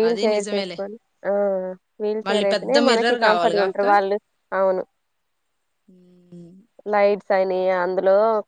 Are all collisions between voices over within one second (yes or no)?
no